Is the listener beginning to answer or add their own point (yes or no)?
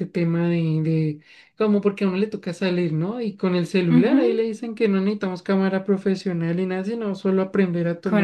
yes